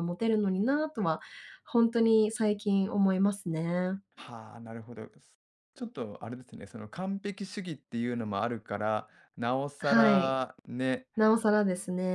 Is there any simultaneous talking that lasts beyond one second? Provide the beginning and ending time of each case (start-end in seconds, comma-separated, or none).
none